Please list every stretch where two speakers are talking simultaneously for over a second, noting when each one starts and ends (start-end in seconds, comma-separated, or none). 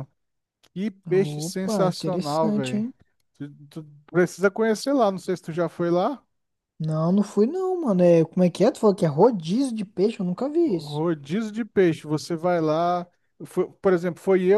1.1-2.9